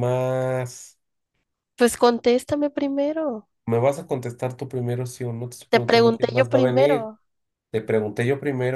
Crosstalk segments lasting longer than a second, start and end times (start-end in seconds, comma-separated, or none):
5.7-7.1